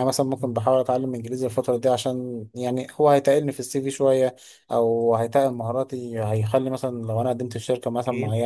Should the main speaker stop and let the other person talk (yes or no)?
no